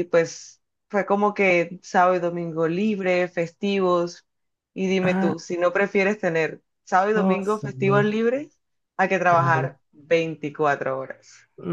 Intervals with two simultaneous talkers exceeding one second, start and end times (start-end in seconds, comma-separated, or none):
none